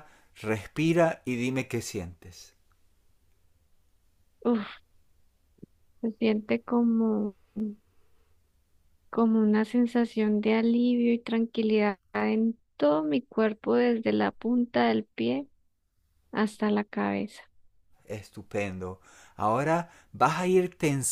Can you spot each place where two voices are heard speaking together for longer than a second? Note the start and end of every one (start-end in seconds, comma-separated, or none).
none